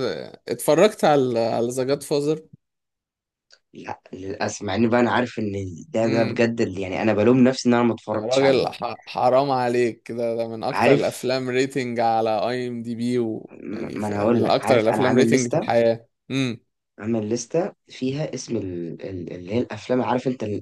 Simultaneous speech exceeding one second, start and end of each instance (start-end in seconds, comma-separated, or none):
13.5-15.7